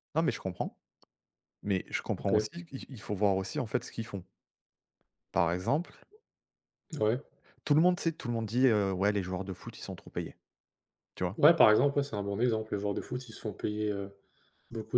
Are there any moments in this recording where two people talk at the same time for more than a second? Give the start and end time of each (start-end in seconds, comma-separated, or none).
none